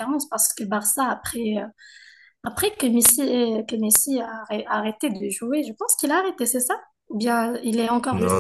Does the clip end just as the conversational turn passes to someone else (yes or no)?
yes